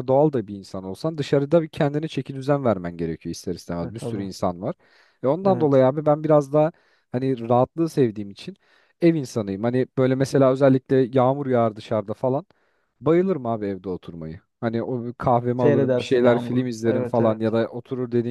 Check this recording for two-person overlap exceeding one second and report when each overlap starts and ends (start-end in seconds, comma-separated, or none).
15.6-17.5